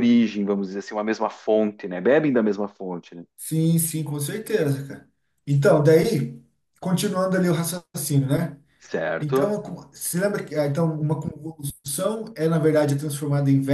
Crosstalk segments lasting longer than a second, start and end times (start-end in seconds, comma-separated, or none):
none